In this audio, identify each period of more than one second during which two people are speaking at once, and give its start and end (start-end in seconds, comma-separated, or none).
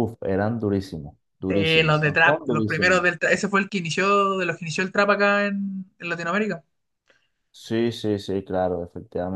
1.5-3.0